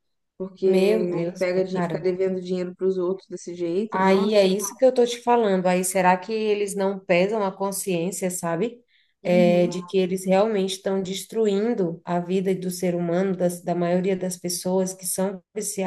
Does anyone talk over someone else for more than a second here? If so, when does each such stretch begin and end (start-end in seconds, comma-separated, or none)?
0.6-2.0